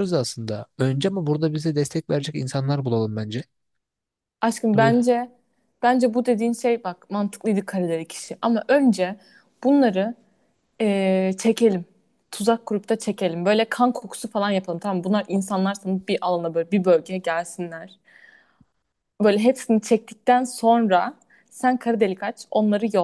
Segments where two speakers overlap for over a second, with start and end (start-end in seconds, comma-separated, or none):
none